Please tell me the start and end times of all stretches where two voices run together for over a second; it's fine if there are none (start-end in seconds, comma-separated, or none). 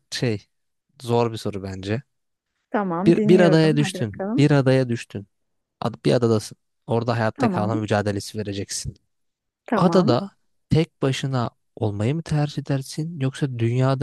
3.0-4.5